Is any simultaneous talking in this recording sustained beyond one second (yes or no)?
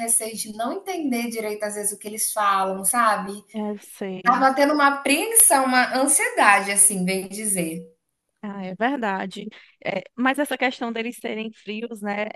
no